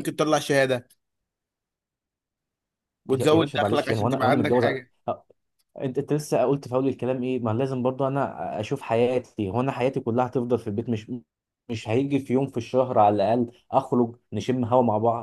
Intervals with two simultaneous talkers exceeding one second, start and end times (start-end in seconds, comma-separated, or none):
3.1-4.7